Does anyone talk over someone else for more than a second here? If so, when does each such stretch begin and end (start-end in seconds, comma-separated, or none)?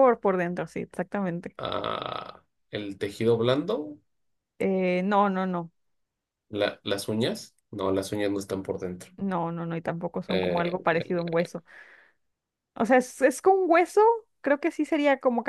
none